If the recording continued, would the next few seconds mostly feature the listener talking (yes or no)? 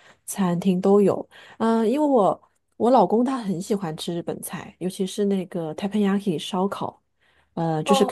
no